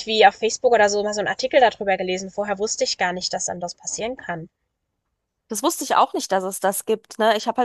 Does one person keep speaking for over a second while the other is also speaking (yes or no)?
no